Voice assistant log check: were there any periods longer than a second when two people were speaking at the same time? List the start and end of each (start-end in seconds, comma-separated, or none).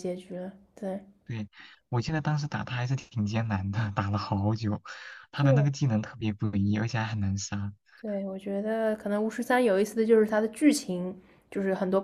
none